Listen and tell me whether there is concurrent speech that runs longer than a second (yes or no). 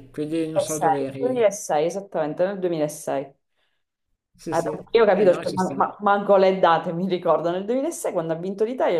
yes